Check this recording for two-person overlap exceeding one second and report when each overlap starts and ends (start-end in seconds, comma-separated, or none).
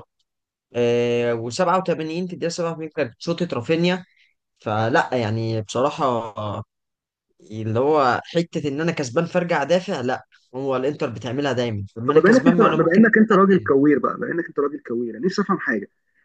12.1-13.7